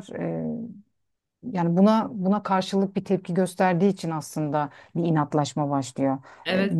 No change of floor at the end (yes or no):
no